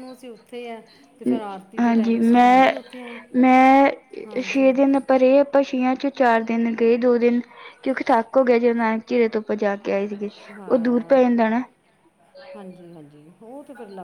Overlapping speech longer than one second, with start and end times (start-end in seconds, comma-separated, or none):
none